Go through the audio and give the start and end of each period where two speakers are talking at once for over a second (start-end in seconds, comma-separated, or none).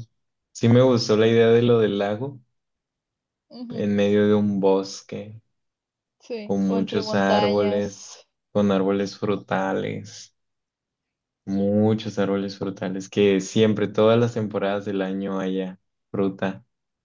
6.4-7.9